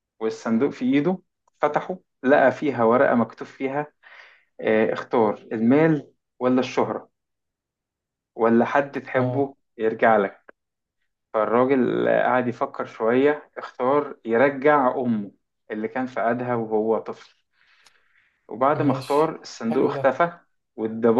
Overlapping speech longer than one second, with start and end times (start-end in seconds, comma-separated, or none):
18.8-20.2